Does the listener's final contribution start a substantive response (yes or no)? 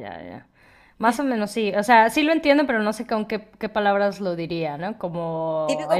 yes